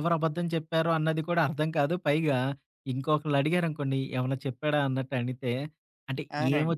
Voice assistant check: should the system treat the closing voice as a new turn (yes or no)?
no